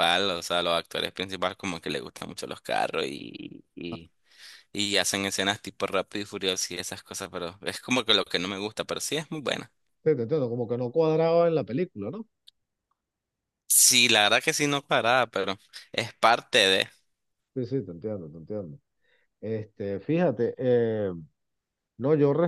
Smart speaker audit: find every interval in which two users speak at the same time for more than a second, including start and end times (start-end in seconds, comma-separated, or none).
none